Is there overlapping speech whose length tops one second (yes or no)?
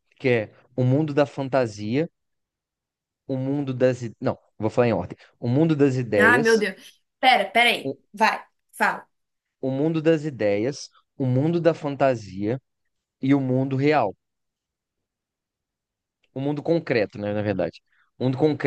no